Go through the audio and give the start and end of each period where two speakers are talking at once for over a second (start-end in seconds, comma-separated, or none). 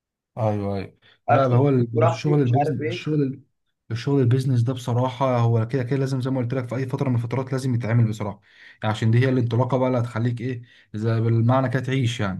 1.3-3.0